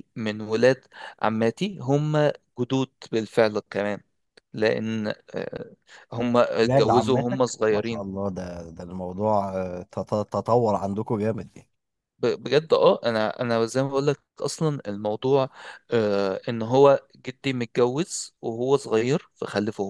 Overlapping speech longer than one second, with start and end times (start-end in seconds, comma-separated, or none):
6.6-8.1